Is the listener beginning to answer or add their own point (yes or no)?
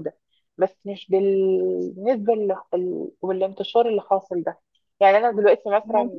no